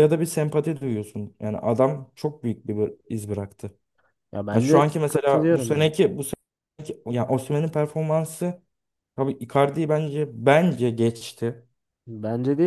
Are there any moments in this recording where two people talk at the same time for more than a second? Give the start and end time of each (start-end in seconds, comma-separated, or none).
4.5-5.9